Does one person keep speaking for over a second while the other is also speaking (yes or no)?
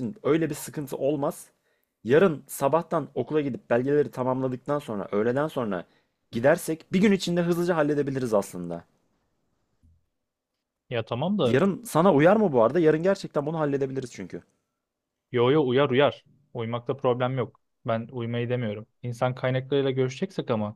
no